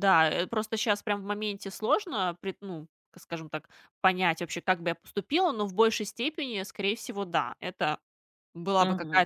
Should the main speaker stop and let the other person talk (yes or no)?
no